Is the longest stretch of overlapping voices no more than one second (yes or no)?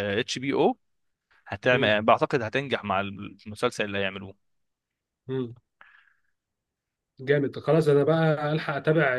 yes